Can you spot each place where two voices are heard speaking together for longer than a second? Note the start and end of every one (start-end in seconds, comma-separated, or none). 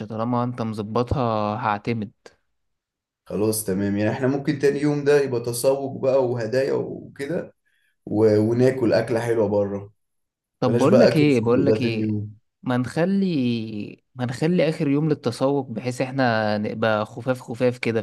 10.6-12.2